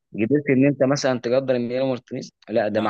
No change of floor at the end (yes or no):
yes